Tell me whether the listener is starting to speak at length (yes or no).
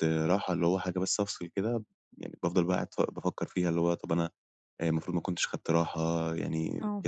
no